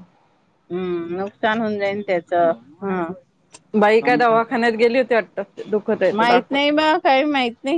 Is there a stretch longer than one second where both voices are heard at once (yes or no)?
no